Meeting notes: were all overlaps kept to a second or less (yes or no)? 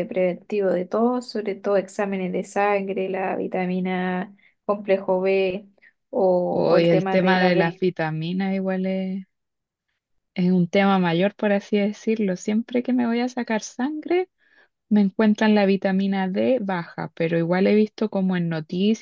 no